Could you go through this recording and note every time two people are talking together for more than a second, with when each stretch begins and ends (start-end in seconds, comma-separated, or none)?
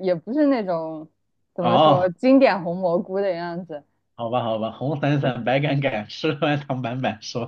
none